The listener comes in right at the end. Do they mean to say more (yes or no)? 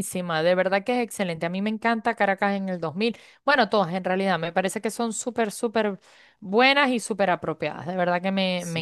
yes